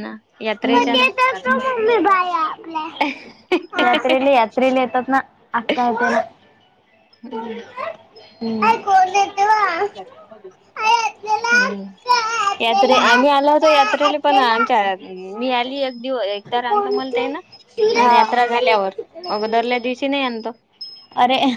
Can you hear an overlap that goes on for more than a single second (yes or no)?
yes